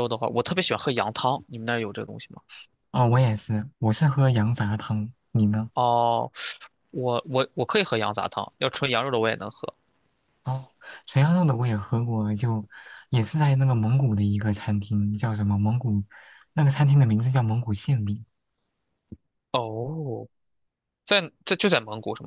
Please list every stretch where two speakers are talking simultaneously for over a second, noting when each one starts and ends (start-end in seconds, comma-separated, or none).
none